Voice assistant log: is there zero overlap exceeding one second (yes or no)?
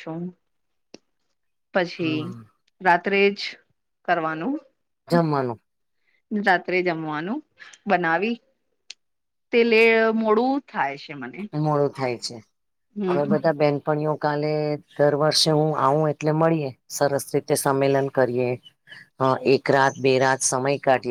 yes